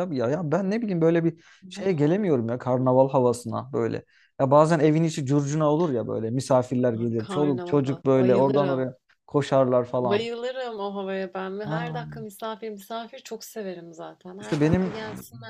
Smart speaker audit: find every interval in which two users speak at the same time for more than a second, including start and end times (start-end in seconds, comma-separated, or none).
7.0-8.9